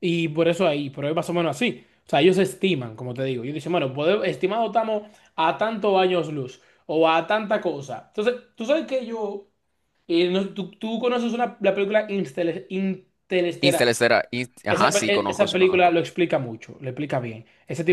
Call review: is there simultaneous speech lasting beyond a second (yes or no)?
yes